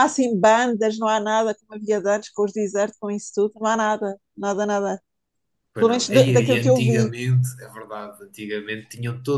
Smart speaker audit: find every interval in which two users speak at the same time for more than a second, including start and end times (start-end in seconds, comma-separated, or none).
5.8-7.2